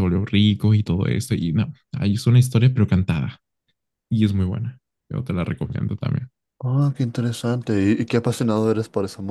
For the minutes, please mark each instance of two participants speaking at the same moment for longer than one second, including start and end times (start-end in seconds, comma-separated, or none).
none